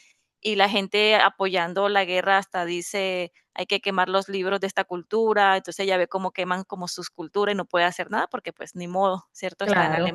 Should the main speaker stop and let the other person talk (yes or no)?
no